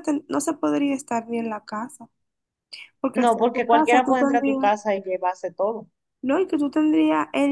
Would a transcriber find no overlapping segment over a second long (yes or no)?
no